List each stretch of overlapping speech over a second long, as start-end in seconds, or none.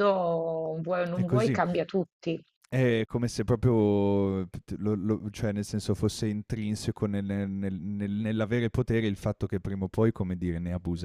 none